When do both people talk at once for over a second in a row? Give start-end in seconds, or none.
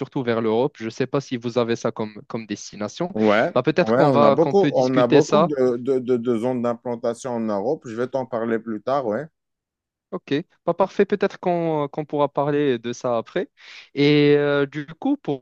3.8-5.5